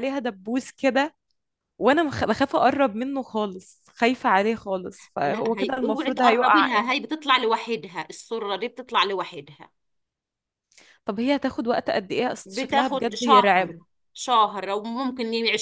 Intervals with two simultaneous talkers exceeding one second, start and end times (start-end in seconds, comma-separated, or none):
5.2-6.9, 12.4-13.7